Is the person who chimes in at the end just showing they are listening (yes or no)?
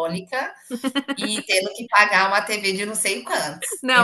no